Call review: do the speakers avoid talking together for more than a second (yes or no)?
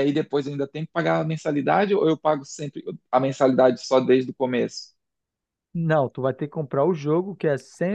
yes